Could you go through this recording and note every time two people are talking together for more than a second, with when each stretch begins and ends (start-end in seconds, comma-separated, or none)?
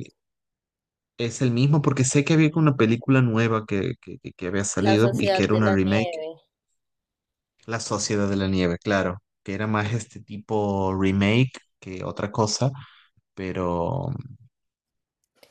4.8-6.2